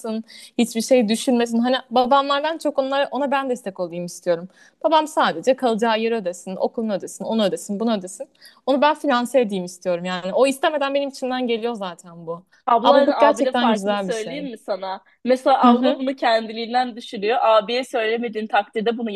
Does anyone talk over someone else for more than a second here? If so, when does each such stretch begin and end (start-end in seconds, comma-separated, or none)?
12.8-14.5